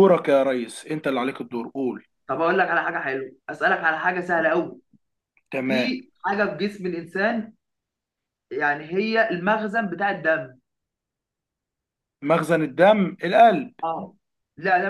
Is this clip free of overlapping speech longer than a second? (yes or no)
yes